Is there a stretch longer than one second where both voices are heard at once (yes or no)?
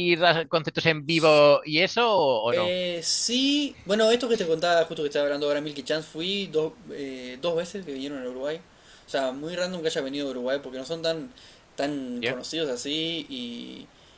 no